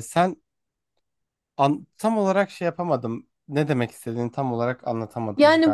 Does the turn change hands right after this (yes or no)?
yes